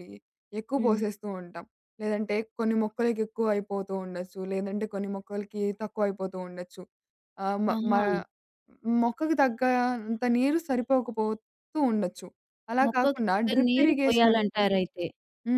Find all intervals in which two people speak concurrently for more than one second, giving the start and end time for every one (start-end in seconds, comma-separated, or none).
12.9-14.8